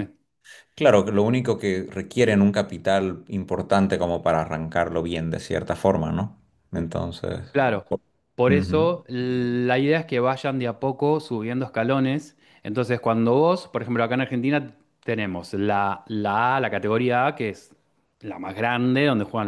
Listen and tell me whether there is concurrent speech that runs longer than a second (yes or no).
no